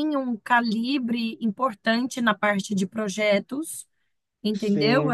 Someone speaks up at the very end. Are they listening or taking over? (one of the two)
listening